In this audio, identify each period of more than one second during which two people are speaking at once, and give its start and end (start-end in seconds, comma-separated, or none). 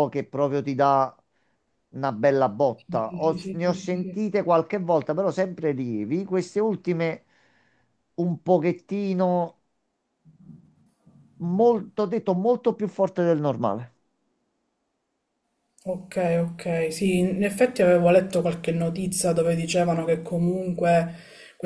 2.8-4.2